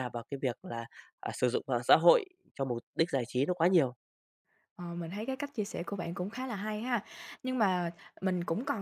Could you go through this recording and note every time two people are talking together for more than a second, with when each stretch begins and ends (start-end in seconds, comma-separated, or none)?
none